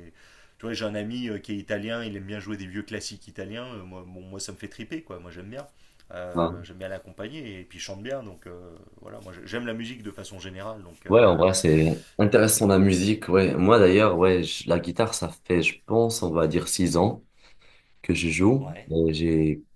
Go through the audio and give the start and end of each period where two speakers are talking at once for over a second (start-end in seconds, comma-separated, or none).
none